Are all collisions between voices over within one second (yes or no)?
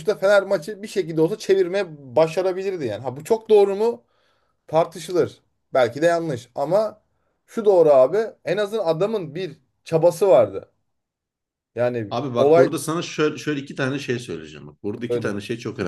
yes